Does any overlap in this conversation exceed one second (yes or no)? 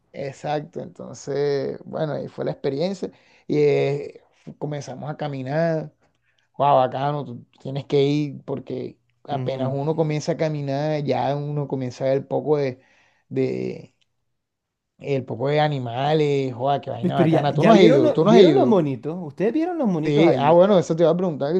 yes